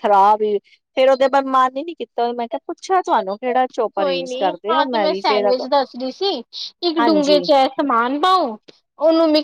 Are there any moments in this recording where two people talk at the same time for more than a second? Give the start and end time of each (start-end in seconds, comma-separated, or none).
none